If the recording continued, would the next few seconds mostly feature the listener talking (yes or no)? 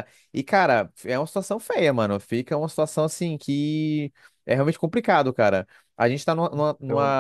no